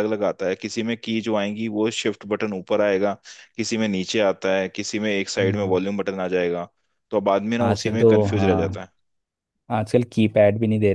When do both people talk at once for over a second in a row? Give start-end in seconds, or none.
7.6-8.8